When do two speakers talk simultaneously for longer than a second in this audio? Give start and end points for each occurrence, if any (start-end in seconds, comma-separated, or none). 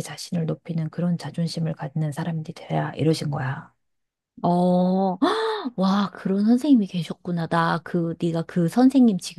none